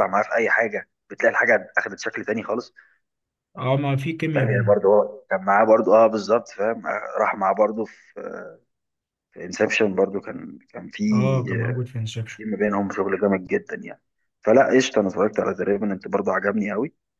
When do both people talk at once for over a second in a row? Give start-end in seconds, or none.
none